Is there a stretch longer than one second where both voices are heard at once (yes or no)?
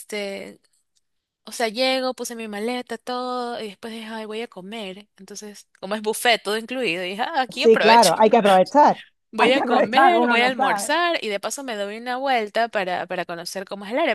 yes